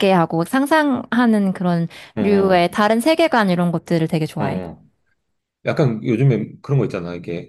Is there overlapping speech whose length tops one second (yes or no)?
no